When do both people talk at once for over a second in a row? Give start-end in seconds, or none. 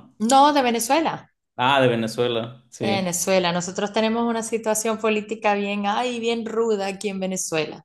none